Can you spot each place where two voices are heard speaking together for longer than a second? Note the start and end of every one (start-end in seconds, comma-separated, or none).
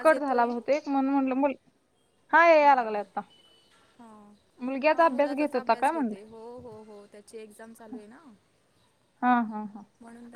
4.9-6.1